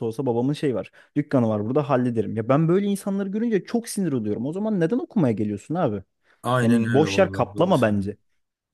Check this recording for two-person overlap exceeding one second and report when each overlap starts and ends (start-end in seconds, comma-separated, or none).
6.6-8.2